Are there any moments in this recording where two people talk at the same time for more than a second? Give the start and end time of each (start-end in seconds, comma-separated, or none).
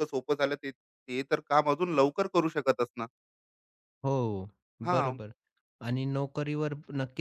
none